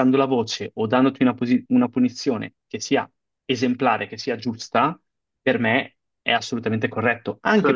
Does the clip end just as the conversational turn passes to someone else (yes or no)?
no